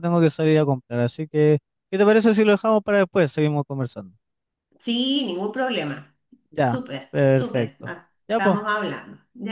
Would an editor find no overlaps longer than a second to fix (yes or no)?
no